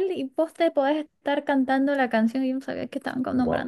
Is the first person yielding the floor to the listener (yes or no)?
yes